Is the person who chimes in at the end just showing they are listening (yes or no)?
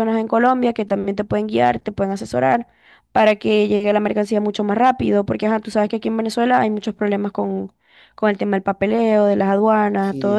no